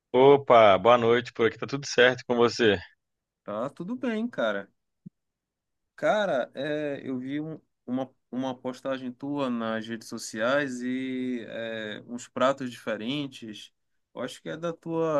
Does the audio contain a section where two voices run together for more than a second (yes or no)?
no